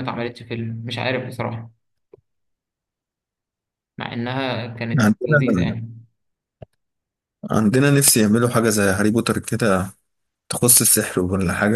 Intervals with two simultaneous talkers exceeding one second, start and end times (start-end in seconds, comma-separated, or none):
none